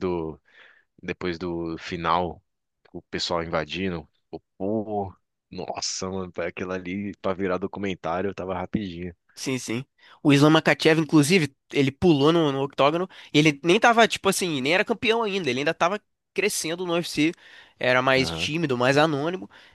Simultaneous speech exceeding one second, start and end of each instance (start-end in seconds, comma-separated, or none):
none